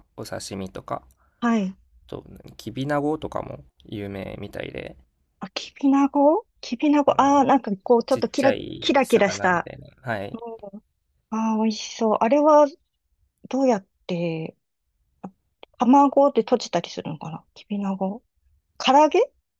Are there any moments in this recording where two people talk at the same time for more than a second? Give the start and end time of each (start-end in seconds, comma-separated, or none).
8.1-9.7